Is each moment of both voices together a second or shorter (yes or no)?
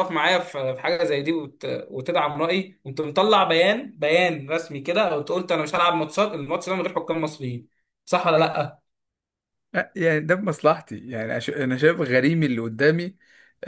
yes